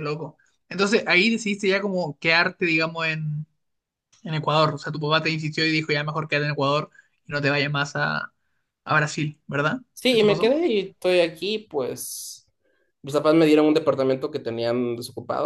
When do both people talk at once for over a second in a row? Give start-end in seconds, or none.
none